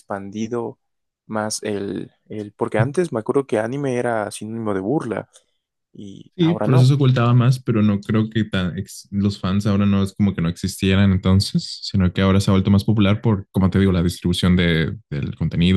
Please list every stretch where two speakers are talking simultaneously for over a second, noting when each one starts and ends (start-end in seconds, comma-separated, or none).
none